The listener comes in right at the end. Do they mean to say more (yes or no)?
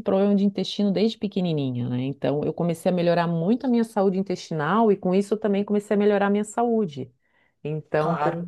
yes